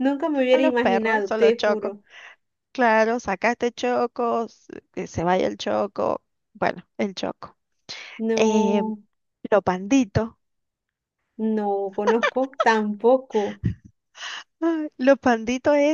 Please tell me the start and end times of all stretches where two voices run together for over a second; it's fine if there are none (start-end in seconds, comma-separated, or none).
0.5-1.9